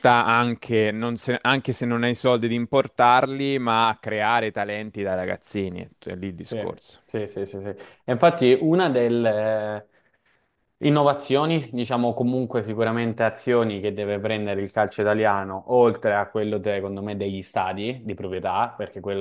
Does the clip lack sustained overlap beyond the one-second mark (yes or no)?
yes